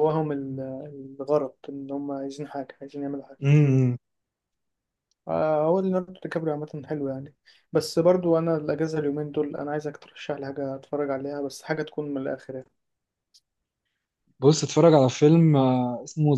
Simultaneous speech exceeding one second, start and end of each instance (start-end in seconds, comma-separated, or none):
none